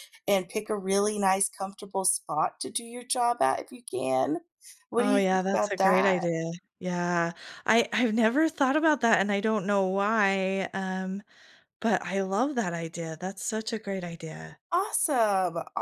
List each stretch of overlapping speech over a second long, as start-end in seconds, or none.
5.0-6.2